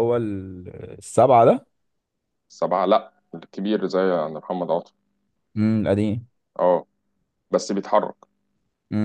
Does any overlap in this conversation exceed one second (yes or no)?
no